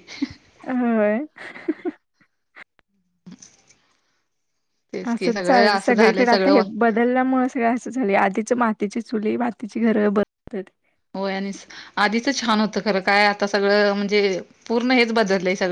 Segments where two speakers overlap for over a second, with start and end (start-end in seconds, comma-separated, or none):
5.1-6.6